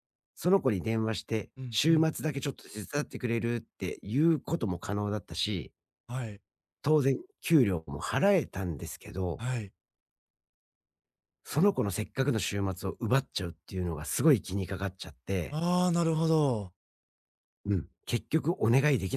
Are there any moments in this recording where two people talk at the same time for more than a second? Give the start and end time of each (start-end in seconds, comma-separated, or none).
none